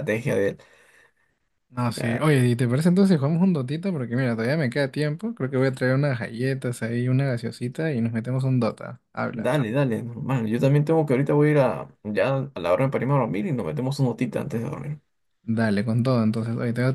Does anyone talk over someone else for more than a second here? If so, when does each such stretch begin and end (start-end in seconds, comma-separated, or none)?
none